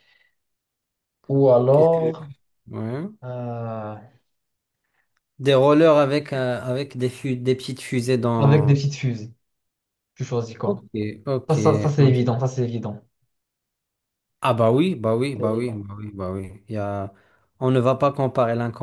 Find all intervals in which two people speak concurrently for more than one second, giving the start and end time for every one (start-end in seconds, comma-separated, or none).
none